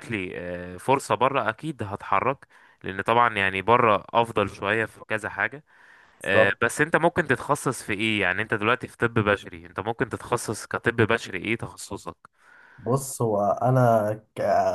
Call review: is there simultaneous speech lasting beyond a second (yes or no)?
no